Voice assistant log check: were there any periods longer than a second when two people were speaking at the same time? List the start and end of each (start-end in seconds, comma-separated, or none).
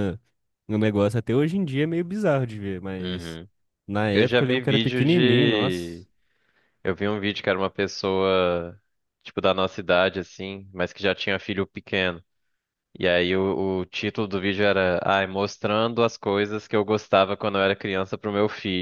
4.1-6.0